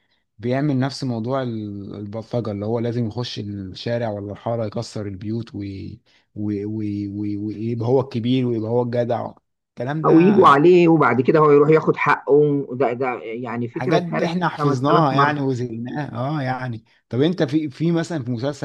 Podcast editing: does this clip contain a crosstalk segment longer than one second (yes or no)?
yes